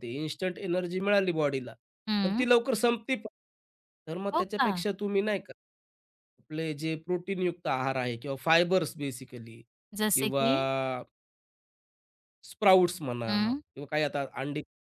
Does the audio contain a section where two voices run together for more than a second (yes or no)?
no